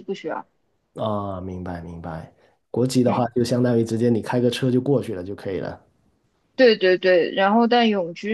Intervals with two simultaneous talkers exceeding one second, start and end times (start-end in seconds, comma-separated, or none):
none